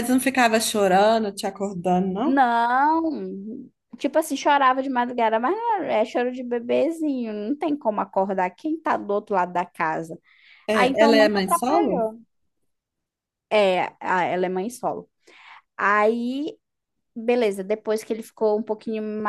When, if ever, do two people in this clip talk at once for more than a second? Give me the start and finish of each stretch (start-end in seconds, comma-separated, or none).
10.7-12.1